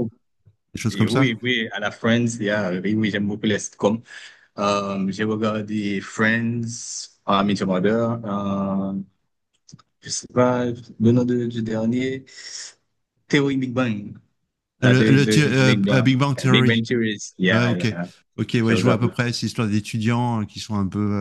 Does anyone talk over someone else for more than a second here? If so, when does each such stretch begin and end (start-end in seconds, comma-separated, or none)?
14.8-16.9